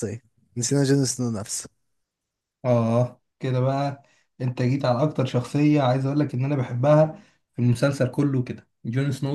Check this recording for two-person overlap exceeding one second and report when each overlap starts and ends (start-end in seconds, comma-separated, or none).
none